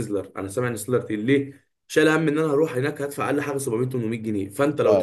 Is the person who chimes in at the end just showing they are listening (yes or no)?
yes